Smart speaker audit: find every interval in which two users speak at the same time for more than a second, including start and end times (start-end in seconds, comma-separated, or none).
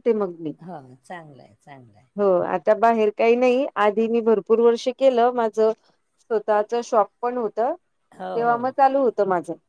none